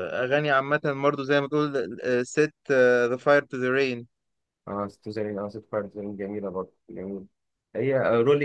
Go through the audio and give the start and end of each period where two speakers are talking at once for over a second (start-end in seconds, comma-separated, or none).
none